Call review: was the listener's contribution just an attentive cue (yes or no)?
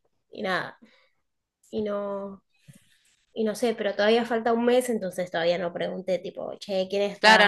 no